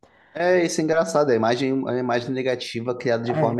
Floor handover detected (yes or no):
no